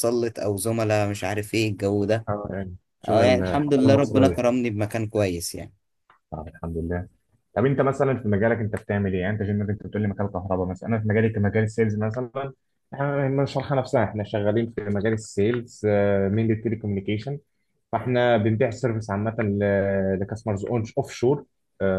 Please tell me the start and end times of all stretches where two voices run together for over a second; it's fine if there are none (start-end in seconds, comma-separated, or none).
3.1-4.5